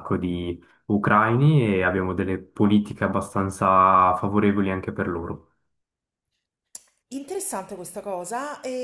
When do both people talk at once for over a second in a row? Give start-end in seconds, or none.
none